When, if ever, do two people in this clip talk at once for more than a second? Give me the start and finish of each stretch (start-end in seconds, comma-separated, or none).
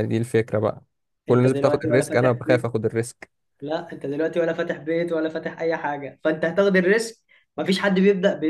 1.3-2.7